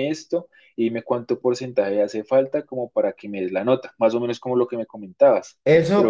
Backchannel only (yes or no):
no